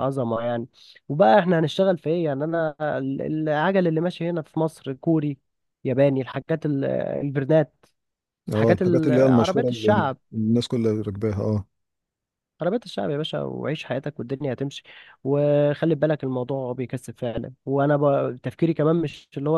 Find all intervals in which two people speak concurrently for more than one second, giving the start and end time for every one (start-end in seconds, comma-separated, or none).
8.5-10.2